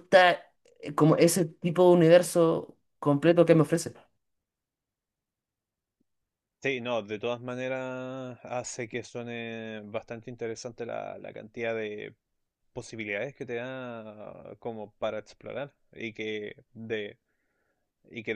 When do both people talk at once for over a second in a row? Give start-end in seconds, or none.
none